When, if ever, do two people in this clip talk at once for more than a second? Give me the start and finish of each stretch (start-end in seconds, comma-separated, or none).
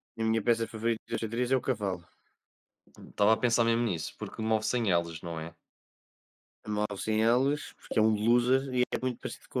none